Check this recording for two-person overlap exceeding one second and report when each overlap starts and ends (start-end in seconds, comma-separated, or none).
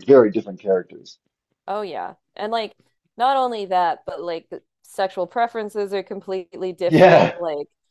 none